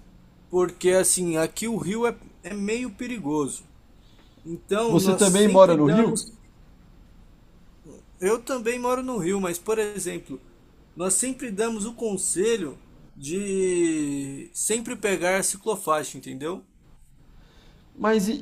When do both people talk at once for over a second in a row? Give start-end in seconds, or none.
4.9-6.2